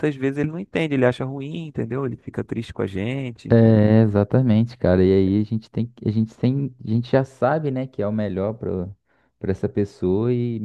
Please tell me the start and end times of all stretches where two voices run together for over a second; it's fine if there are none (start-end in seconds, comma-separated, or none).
none